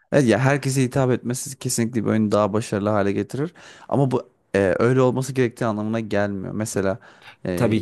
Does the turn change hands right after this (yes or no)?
no